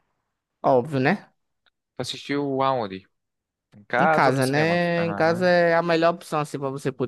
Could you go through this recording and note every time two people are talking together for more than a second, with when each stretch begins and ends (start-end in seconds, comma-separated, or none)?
4.0-5.5